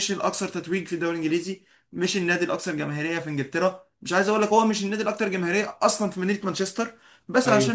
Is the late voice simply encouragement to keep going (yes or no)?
yes